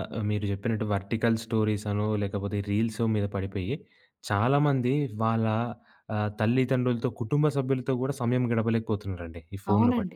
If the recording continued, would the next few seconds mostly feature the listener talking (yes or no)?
yes